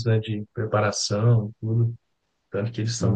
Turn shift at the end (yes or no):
no